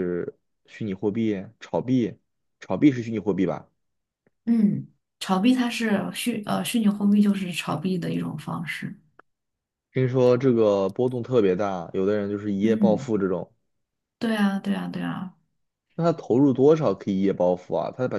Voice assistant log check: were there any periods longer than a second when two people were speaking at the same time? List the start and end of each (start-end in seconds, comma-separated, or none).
none